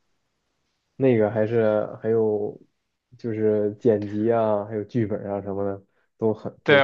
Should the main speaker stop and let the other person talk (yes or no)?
yes